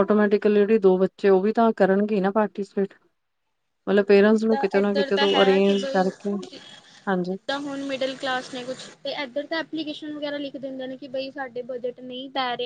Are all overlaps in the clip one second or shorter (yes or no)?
no